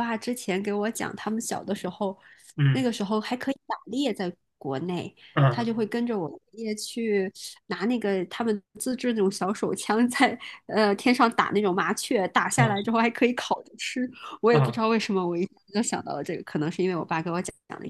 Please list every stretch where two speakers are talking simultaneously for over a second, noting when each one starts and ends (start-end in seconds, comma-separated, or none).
none